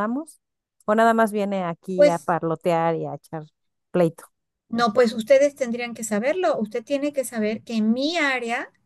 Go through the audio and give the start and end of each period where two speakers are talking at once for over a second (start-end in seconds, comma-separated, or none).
none